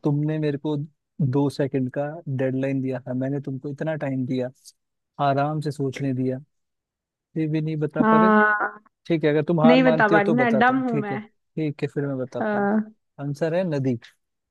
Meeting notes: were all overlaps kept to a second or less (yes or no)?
no